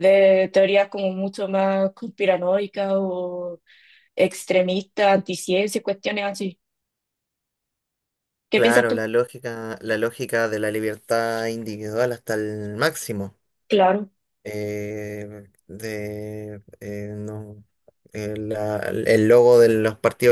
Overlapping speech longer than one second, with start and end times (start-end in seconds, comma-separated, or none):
none